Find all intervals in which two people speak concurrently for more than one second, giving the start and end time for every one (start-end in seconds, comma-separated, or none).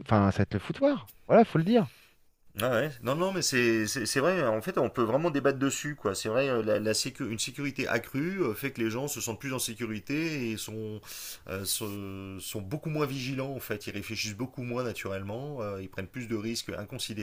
none